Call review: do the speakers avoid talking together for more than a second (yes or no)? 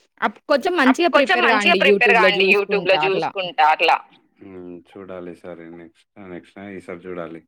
no